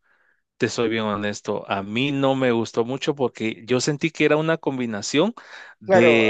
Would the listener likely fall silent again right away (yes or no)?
no